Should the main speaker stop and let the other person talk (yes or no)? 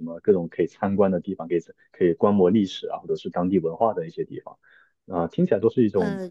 no